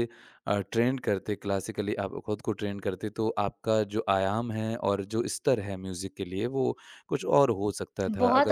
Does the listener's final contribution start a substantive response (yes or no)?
yes